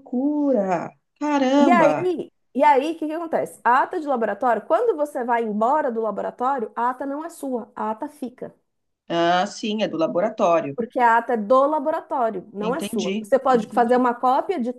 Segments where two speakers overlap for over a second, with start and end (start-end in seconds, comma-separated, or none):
12.6-14.1